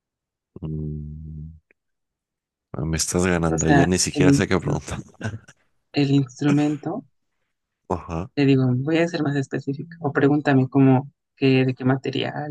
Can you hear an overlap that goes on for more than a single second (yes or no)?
yes